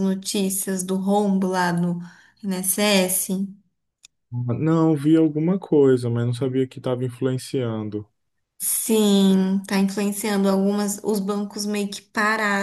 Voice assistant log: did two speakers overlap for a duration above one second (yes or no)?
no